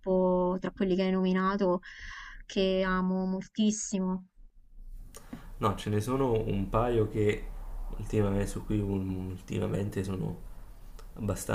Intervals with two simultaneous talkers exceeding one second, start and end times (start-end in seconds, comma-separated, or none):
none